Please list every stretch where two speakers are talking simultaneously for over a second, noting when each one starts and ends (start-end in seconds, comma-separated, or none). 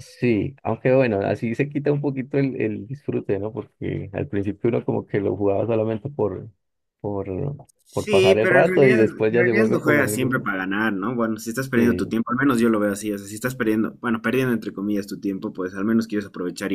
7.9-10.4